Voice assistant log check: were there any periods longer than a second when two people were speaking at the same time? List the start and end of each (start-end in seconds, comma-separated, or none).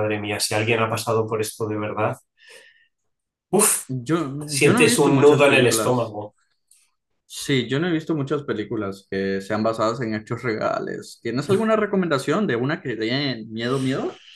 4.6-6.2